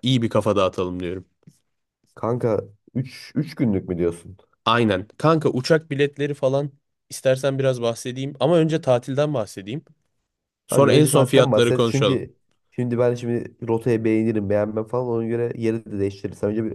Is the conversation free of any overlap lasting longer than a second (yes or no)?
no